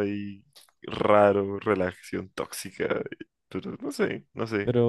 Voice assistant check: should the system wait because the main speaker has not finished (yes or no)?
no